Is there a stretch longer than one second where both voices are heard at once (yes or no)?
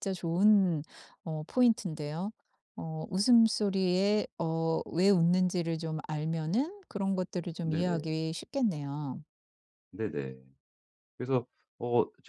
no